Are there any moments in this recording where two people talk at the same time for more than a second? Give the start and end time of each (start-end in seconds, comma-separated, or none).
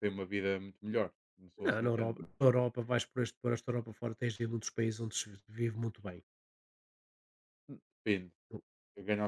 none